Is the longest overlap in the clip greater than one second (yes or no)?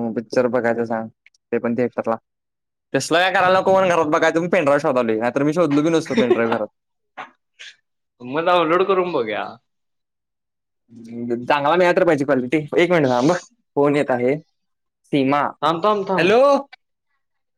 no